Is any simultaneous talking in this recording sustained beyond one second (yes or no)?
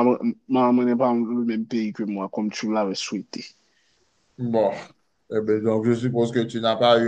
no